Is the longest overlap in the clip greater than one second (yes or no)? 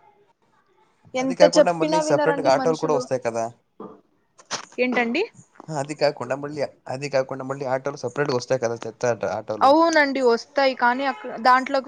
yes